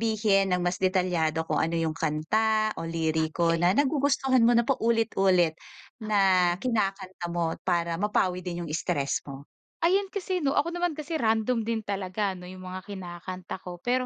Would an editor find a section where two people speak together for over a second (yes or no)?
no